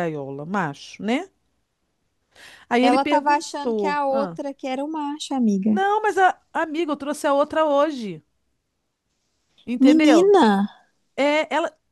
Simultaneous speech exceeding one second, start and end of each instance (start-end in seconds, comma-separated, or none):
2.8-4.4